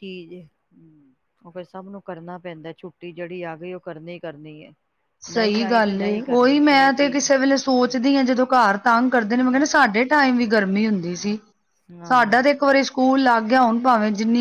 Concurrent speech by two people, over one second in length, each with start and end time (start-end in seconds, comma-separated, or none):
none